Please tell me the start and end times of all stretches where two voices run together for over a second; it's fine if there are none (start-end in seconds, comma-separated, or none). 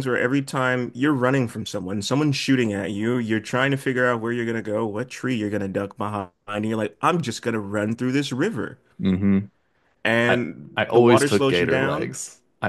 10.3-12.2